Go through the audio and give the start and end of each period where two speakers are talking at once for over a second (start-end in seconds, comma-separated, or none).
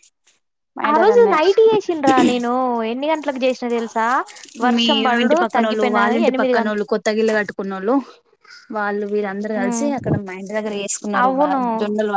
4.8-6.8